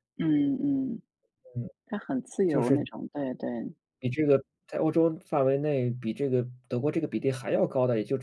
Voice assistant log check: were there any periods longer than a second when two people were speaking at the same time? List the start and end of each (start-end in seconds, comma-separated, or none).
none